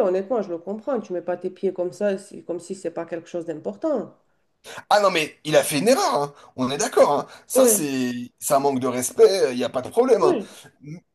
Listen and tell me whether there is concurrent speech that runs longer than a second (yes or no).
no